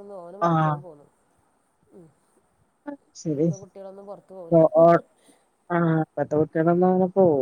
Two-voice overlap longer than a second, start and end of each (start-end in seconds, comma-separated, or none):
none